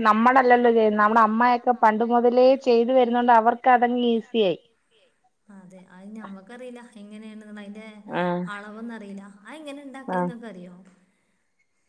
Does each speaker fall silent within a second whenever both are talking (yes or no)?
no